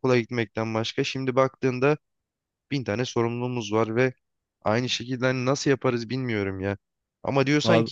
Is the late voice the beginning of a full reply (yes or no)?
no